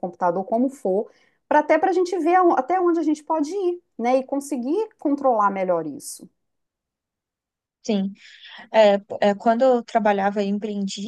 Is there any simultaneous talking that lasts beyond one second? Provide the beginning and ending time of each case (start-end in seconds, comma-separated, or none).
none